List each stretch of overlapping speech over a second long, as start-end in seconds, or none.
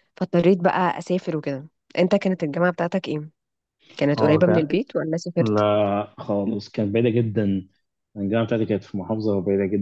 none